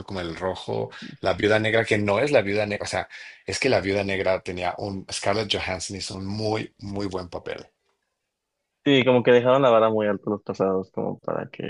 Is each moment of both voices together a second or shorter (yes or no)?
yes